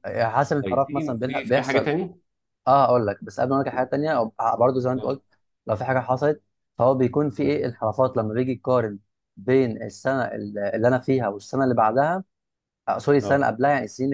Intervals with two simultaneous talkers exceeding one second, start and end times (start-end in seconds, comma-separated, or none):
0.6-1.9